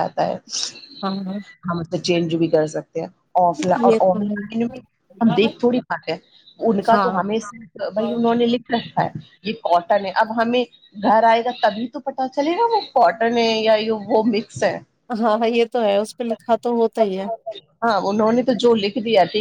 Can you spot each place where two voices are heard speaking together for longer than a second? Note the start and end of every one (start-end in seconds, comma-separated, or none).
none